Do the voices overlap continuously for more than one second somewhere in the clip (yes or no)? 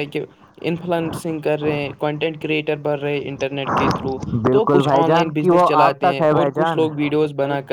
yes